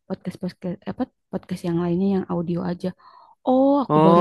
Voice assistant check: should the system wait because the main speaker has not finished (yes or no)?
no